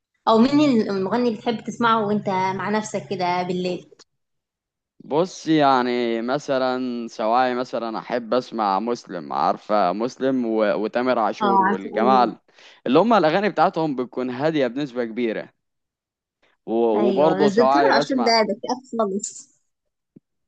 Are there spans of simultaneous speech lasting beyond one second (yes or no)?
yes